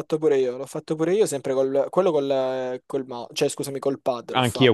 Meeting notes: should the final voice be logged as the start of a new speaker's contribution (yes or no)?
yes